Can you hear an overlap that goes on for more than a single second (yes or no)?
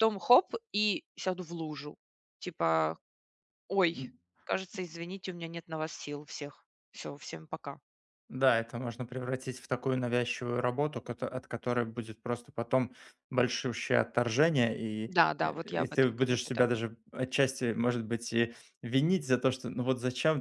yes